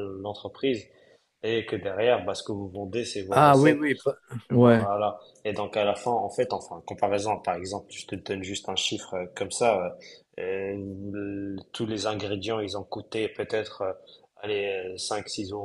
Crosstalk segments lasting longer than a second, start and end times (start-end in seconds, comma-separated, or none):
none